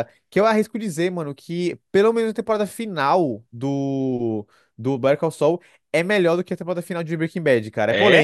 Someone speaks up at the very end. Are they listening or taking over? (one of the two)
listening